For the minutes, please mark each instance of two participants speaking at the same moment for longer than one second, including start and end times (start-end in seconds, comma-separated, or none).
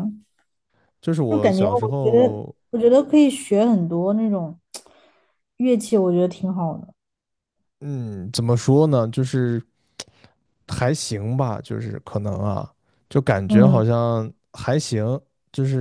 1.3-2.5